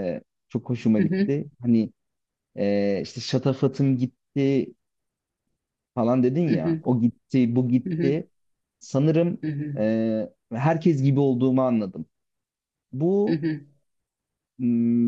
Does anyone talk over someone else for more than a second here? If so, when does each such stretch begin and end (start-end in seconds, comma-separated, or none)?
none